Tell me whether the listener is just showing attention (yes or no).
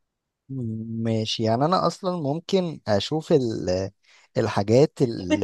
no